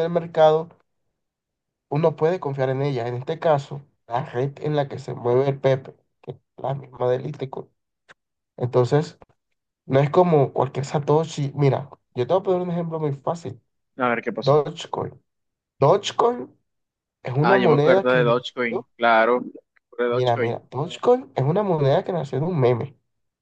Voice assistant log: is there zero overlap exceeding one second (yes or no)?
no